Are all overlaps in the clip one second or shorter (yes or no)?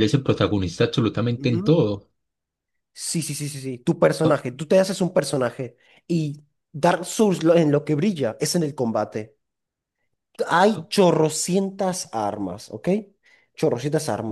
yes